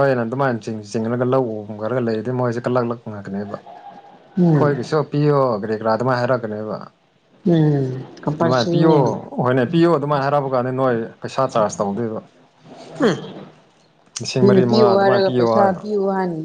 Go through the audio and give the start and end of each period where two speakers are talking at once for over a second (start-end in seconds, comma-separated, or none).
14.4-15.8